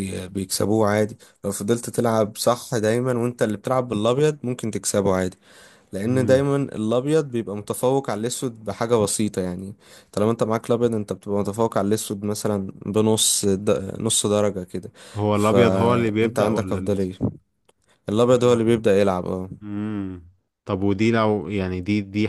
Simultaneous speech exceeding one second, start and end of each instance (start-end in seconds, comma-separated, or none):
15.3-17.0